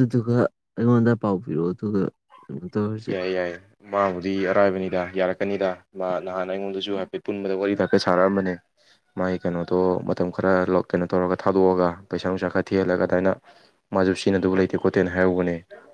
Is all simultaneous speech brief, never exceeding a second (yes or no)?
yes